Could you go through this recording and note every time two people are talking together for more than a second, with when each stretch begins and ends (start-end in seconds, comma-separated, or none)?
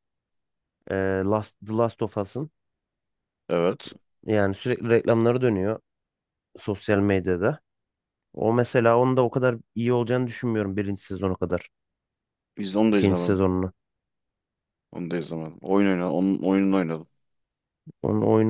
none